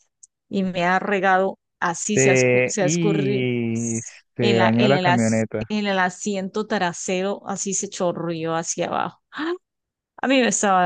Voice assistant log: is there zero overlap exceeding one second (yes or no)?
no